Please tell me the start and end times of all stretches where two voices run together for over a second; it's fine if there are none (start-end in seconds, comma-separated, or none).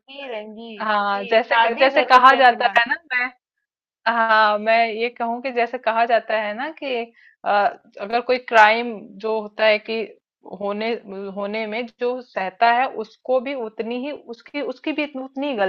0.8-2.8